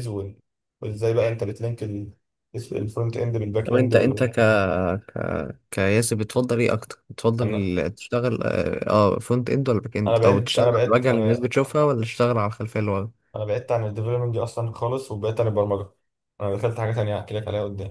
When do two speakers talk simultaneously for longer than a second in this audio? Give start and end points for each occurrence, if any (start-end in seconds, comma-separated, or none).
10.1-11.4